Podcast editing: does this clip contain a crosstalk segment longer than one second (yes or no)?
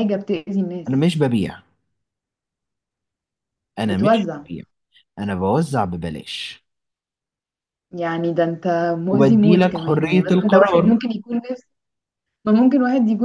yes